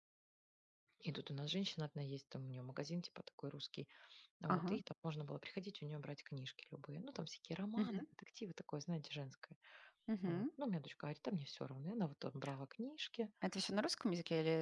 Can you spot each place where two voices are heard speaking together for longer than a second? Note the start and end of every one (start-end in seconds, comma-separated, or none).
none